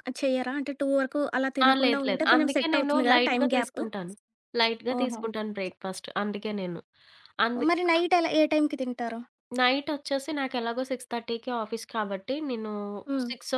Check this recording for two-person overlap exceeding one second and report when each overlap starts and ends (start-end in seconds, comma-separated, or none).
1.7-3.8